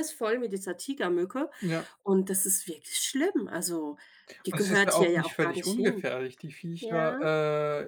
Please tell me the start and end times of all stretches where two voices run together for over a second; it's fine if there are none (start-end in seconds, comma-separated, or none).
4.5-6.1